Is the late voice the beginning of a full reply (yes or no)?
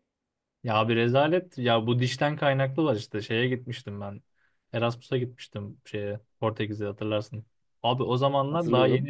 no